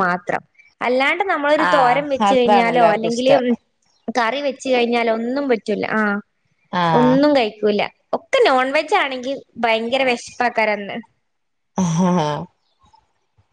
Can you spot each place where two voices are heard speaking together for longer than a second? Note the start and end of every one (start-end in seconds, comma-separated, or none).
1.7-3.4